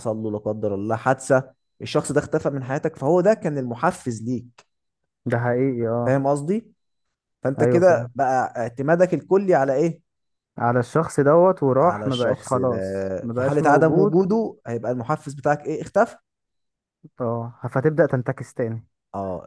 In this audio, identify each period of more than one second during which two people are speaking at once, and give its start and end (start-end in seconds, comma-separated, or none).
11.8-14.1